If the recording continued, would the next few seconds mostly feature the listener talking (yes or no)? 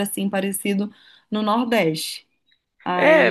yes